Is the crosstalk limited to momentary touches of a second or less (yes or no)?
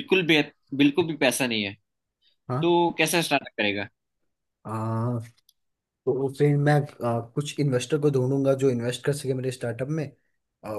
yes